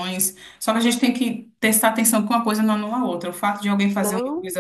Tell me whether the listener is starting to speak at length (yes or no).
no